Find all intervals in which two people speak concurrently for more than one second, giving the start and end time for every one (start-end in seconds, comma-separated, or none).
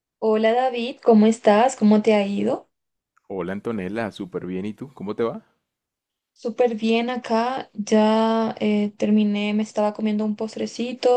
none